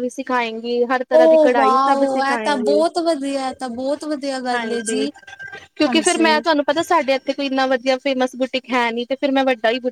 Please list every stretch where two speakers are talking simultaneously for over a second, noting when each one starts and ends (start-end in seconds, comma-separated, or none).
1.2-2.8